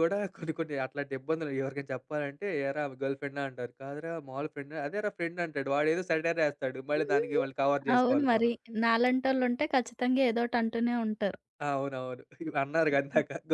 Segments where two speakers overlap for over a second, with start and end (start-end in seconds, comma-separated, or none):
none